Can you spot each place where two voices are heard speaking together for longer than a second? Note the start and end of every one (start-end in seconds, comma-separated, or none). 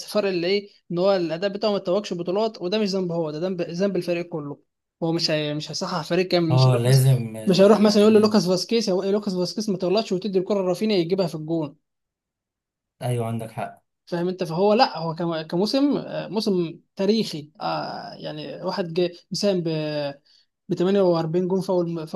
6.5-8.4